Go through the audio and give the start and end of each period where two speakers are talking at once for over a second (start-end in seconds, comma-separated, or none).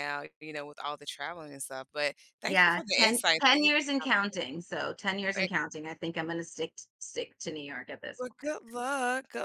2.5-4.4